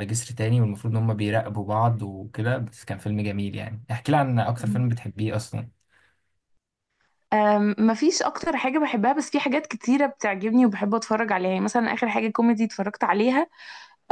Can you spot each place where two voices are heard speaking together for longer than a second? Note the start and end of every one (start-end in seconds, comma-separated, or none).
none